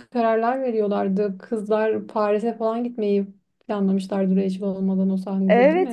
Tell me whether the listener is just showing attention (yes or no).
no